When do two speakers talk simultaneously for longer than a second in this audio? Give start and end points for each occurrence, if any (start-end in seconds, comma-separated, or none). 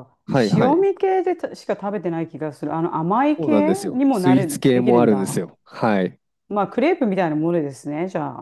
3.4-5.5